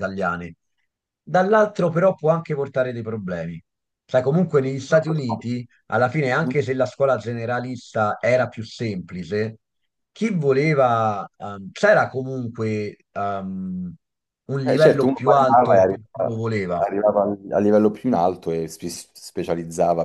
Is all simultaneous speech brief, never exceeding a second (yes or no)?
no